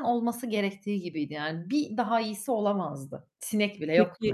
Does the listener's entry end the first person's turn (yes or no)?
yes